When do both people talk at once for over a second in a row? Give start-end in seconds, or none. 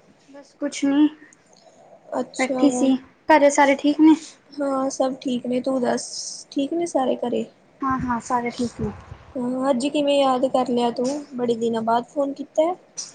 none